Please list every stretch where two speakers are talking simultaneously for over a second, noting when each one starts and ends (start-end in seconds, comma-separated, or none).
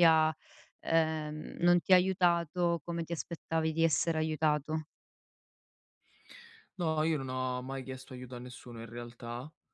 none